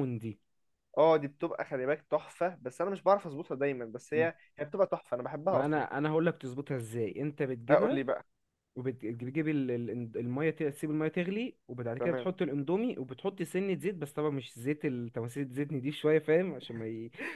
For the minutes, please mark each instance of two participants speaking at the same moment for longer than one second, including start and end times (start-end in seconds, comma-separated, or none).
none